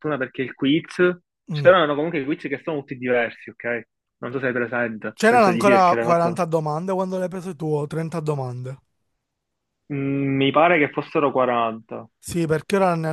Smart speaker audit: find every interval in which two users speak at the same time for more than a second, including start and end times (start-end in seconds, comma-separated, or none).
5.1-6.4